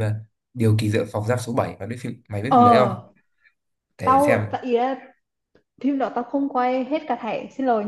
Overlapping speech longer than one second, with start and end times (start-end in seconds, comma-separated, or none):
none